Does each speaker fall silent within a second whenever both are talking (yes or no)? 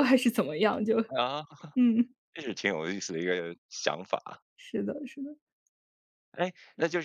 yes